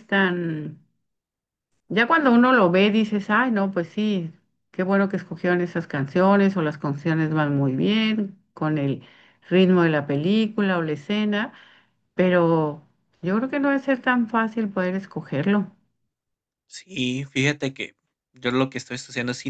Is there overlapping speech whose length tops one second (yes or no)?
no